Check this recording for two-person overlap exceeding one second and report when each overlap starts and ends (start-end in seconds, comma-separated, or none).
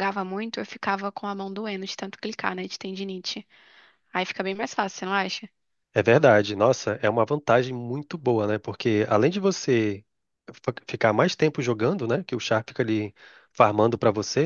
none